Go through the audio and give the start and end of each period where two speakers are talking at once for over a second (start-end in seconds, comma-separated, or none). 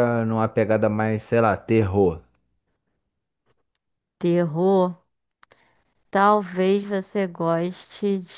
none